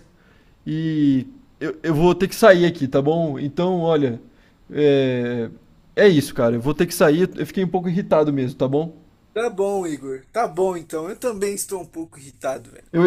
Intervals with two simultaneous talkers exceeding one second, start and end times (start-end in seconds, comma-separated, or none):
none